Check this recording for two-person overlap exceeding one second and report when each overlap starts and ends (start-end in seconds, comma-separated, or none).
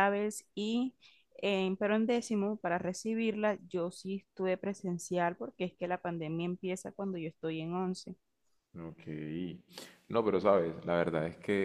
none